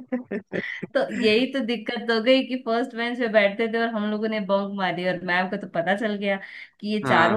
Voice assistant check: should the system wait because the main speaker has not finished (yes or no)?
yes